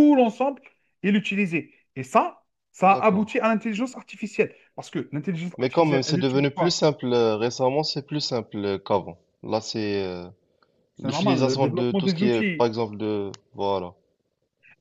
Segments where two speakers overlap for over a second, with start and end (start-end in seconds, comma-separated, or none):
5.6-6.8, 11.0-12.7